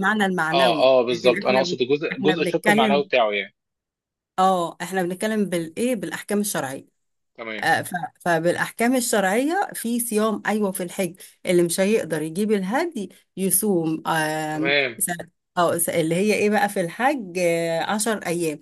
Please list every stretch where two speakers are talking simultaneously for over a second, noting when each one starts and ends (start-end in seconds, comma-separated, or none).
0.5-3.0